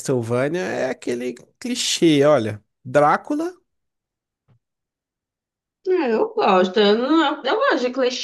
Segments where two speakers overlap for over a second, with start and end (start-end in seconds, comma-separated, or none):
none